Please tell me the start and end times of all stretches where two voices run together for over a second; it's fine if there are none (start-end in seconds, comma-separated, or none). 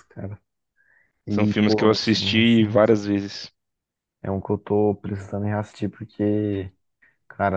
1.3-2.9